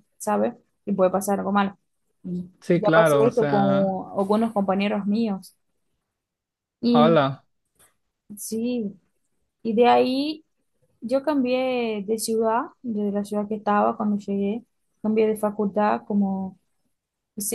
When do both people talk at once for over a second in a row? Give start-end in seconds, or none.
2.6-4.0